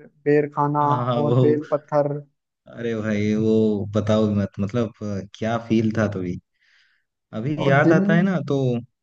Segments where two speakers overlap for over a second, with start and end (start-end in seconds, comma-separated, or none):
none